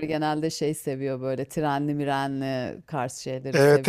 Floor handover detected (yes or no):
yes